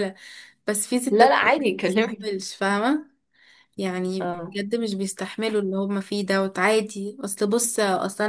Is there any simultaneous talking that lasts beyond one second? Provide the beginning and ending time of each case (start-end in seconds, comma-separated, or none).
1.1-2.3